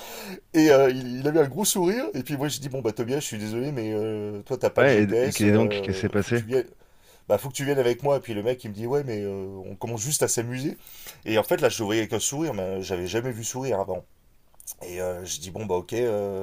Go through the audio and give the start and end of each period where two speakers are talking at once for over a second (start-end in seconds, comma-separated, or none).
4.8-6.4